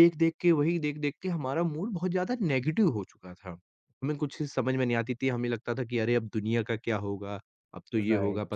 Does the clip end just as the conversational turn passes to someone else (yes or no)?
no